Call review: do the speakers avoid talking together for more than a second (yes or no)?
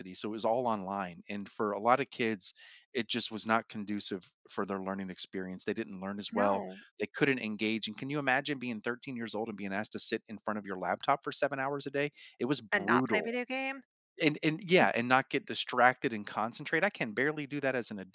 yes